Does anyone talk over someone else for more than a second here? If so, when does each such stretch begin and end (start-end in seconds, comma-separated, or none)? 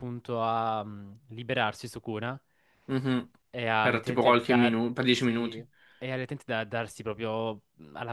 3.8-5.5